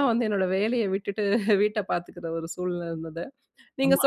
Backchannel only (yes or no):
yes